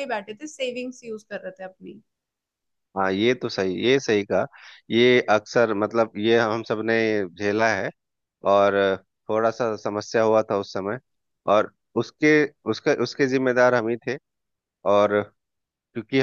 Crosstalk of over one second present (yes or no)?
no